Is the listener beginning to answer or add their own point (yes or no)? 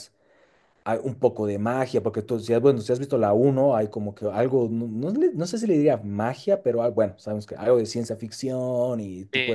yes